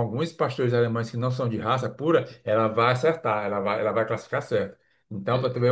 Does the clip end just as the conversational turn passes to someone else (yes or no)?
no